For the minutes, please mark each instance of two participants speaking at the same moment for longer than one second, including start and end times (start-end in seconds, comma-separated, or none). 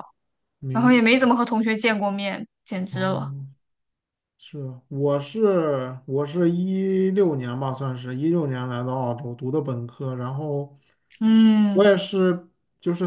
none